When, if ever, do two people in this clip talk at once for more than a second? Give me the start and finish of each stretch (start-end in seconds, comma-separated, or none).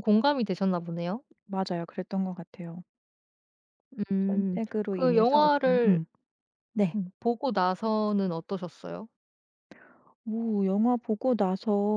4.2-6.0